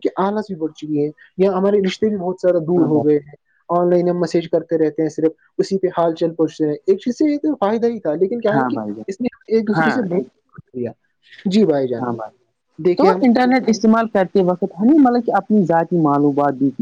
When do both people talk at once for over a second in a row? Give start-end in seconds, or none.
none